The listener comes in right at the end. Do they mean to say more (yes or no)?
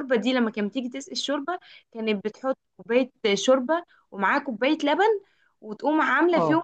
no